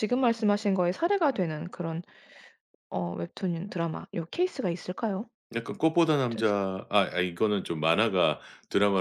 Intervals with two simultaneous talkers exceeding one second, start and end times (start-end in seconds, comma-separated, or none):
none